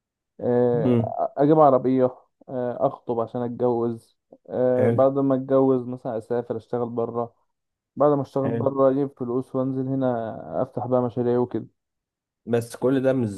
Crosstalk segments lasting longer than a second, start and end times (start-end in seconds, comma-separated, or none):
none